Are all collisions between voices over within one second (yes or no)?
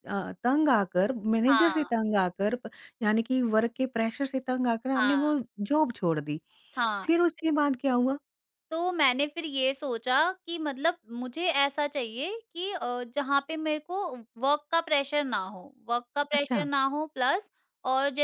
yes